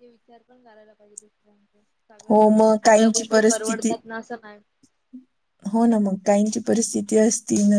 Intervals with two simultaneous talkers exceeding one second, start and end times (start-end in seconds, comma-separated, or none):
2.3-3.9